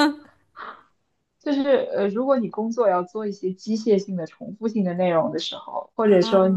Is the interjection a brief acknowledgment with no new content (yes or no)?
yes